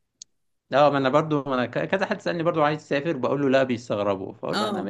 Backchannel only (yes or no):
yes